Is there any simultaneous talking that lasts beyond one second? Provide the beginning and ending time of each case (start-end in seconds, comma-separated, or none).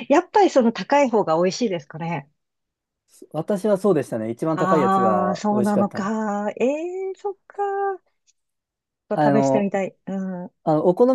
4.5-6.1